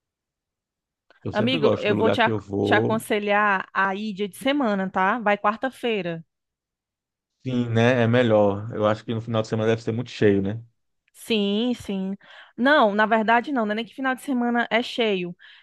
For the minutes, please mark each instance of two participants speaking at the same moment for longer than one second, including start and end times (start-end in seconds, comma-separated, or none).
1.3-3.0